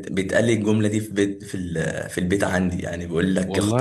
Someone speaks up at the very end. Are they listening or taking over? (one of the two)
listening